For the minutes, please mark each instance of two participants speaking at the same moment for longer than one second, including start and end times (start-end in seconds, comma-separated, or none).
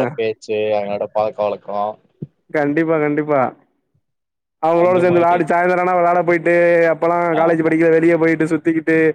none